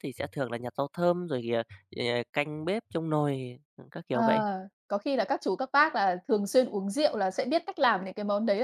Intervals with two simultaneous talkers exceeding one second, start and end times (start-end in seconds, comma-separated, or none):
none